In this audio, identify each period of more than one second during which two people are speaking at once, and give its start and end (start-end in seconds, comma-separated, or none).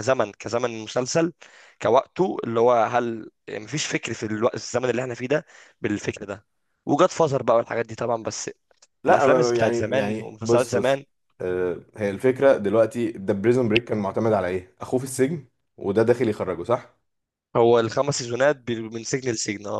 9.1-11.0